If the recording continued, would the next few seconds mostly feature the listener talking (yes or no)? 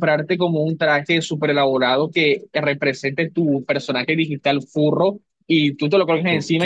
no